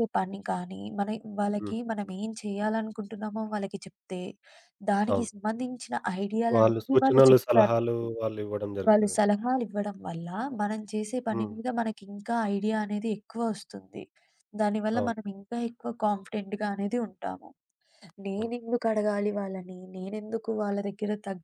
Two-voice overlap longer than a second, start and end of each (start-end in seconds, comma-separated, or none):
6.6-8.1